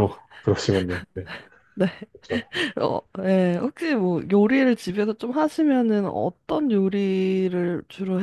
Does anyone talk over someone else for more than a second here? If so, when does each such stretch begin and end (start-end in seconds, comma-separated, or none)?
none